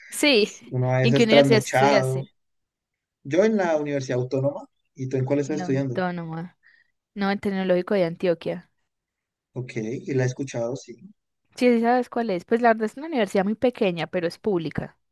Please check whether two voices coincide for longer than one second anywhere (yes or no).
yes